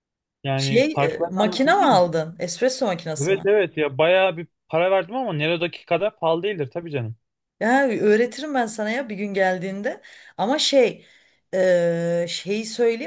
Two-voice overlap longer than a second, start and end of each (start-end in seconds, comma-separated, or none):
0.6-2.2